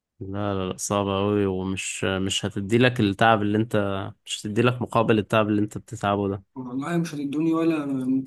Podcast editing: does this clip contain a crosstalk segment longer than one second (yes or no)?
no